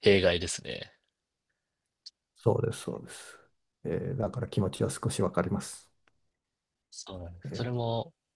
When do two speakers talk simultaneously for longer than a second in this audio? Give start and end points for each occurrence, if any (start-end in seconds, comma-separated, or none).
none